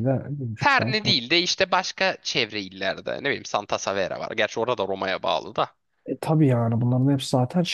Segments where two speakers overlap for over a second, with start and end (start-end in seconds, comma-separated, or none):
none